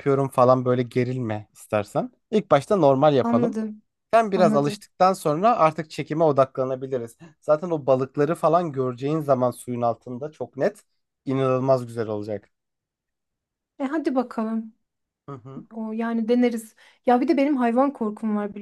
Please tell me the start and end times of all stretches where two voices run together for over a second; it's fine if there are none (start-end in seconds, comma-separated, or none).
none